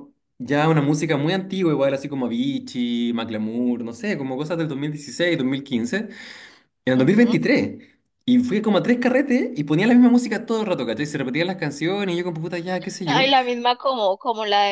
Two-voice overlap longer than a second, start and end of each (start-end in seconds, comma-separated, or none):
none